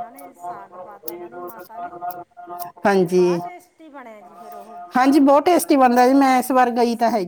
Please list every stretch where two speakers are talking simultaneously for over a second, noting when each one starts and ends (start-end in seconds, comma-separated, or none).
none